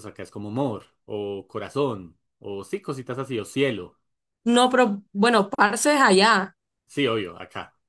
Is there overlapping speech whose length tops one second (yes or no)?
no